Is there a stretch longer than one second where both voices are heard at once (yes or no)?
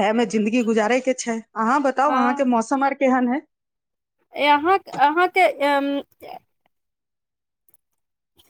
no